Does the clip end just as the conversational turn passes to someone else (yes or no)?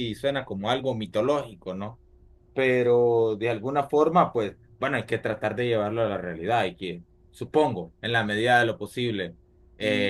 no